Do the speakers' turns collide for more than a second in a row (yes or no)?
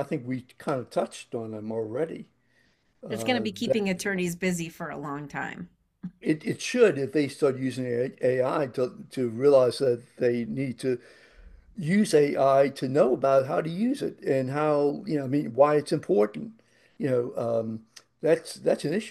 no